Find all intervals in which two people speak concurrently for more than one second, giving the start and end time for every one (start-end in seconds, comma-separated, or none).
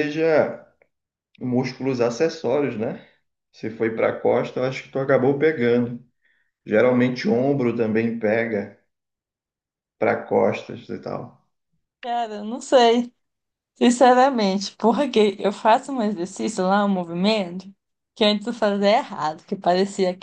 none